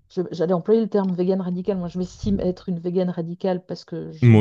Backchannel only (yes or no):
yes